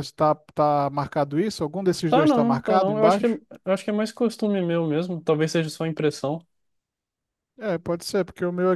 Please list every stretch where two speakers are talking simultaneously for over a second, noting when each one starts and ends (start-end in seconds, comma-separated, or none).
2.1-3.3